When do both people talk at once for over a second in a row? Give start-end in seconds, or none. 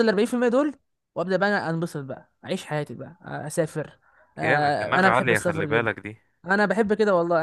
4.4-5.9